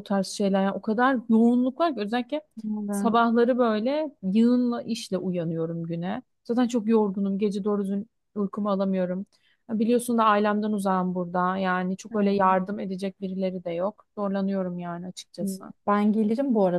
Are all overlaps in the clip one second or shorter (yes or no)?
yes